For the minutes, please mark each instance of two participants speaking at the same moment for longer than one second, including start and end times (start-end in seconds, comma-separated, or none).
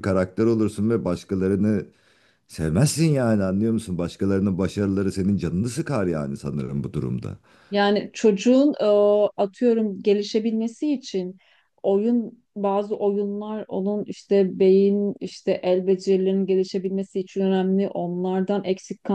none